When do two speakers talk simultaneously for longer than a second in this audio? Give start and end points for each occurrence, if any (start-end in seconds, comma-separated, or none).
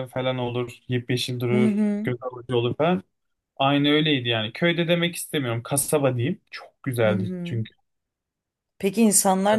none